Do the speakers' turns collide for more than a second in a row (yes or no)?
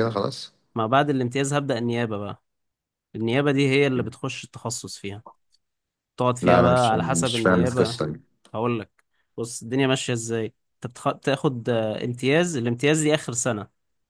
yes